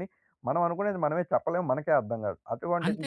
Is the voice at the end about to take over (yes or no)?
yes